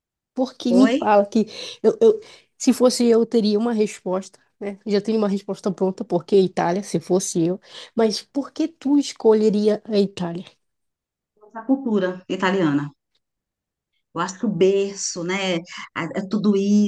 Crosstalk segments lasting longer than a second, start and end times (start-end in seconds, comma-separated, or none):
none